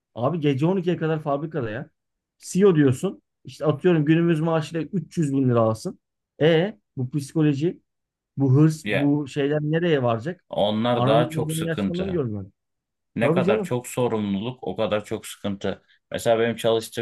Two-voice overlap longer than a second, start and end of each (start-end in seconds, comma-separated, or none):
10.9-12.2